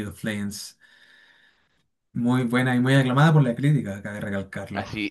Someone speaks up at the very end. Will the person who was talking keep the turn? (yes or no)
no